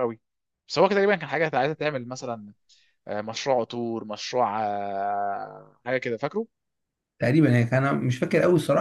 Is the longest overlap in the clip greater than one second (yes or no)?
no